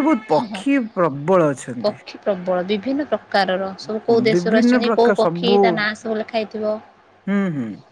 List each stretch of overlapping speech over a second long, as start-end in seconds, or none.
4.3-5.9